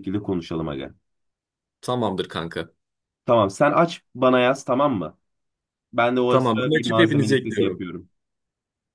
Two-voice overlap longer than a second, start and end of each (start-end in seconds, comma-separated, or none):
6.3-7.9